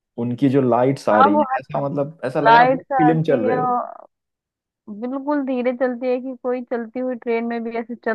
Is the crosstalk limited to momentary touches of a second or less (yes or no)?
no